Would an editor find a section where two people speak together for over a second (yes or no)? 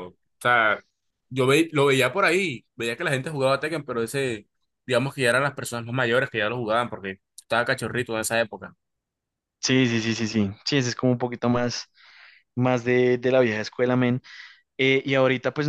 no